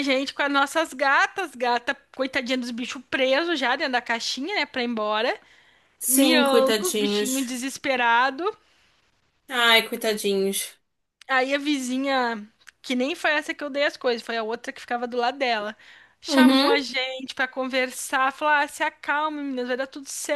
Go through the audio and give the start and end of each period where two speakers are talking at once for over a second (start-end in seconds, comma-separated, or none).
6.1-7.6